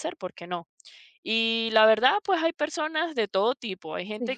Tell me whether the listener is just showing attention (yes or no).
yes